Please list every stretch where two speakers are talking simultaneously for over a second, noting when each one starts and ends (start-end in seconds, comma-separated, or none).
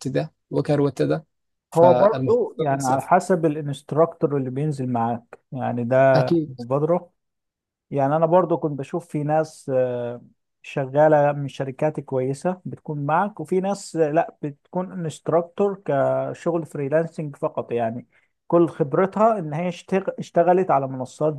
1.7-3.1